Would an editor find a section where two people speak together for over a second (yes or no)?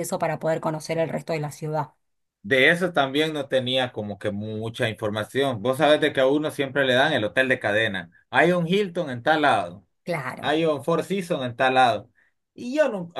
no